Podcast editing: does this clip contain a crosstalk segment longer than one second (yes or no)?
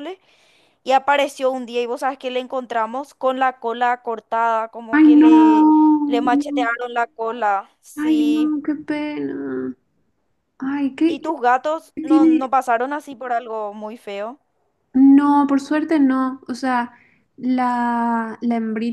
no